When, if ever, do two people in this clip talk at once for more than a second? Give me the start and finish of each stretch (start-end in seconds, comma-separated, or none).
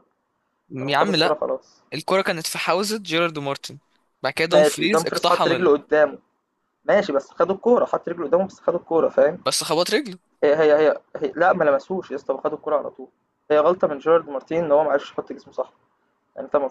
4.5-5.8